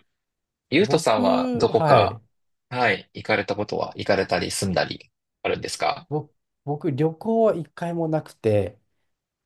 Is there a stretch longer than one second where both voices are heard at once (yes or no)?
yes